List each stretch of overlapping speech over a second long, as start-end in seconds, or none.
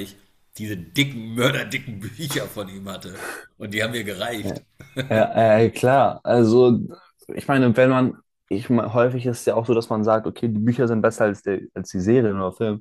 none